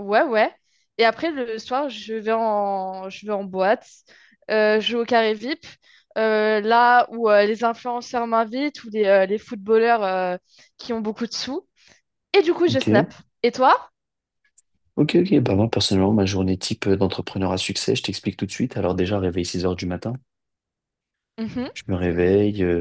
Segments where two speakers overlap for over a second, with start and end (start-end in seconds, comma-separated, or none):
none